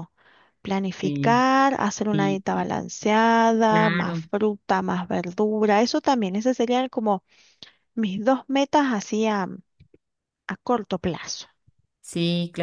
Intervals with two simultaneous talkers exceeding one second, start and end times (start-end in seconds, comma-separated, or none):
none